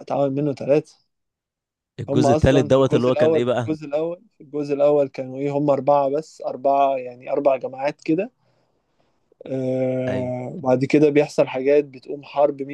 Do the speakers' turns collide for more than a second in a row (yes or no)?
yes